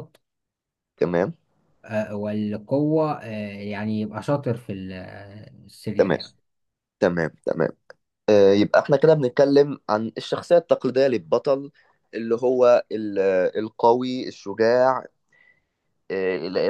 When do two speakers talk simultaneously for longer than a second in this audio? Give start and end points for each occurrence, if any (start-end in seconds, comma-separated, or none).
none